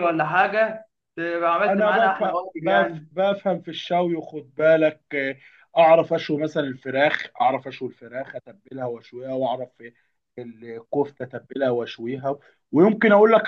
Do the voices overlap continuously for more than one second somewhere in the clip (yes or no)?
yes